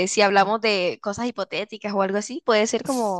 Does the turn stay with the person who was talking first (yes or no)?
no